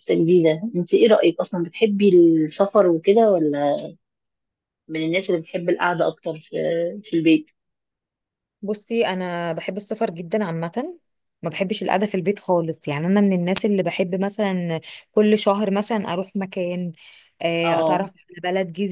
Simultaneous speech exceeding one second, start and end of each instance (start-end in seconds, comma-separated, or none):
none